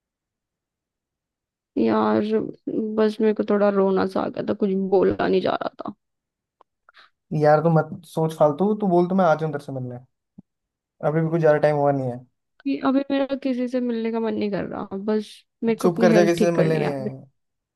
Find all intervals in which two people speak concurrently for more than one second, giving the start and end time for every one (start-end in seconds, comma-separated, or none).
15.8-17.1